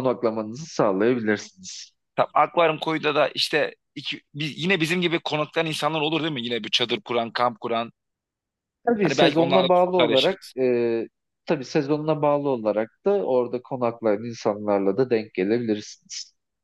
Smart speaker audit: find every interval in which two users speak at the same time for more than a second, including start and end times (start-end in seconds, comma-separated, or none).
9.0-10.5